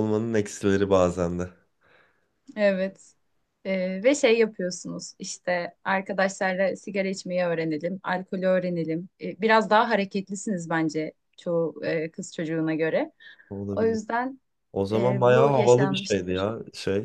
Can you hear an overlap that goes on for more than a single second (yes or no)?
yes